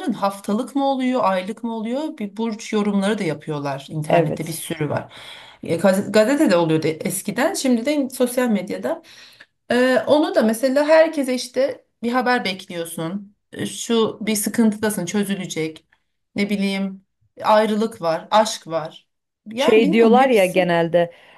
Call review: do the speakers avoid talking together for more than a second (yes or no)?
no